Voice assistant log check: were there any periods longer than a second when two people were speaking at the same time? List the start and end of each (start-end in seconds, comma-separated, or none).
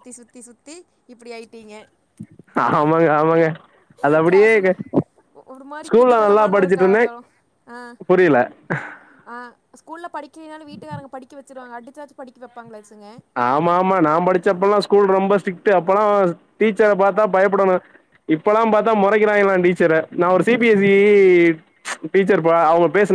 none